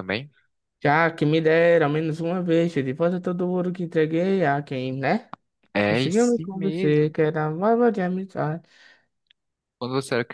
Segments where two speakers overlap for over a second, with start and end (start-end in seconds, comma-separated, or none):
5.8-7.1